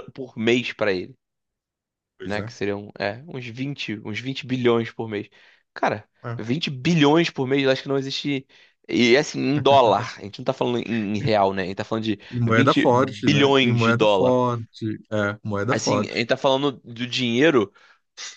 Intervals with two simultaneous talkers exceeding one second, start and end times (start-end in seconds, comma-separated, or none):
12.3-14.4